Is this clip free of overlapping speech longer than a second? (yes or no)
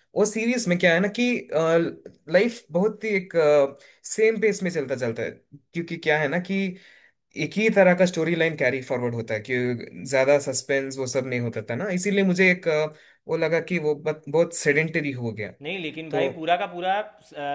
yes